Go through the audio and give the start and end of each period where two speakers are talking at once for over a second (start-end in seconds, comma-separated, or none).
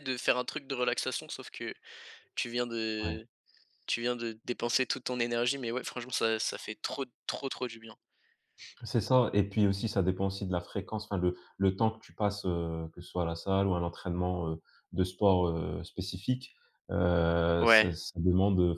none